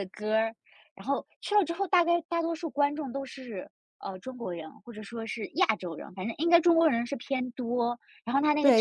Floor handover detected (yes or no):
yes